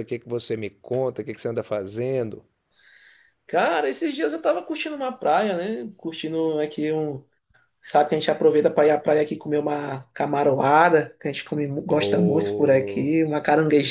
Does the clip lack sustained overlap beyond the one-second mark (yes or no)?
no